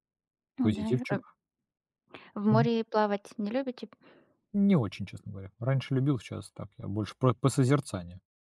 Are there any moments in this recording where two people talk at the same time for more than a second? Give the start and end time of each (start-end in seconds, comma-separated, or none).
none